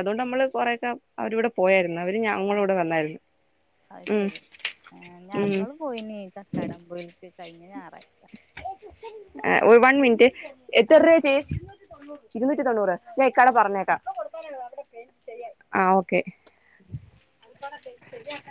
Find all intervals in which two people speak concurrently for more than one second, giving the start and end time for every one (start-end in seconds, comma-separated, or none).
none